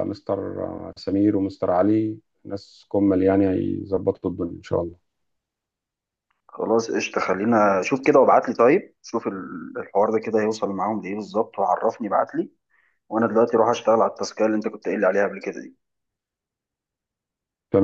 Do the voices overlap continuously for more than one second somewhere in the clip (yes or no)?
no